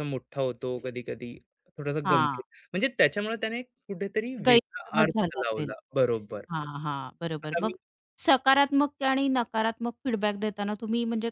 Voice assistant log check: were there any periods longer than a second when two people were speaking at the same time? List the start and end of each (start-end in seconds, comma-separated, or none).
4.5-5.7